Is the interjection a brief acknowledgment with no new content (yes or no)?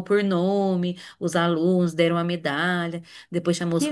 yes